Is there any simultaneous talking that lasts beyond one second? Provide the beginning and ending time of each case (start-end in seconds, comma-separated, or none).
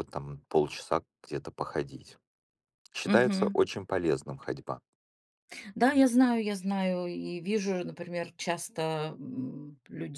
none